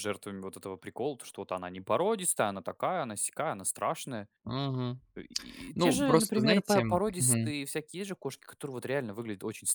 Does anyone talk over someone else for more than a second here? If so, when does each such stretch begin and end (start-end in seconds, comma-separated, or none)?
5.7-7.5